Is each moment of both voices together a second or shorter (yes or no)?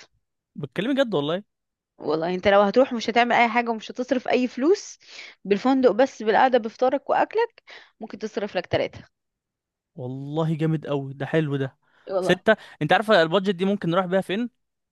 yes